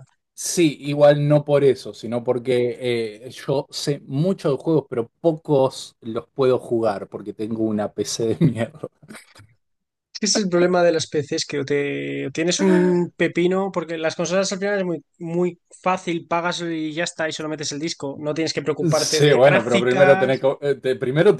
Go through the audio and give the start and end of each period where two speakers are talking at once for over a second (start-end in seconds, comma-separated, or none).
18.9-20.5